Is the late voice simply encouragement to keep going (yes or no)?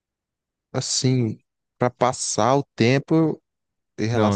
yes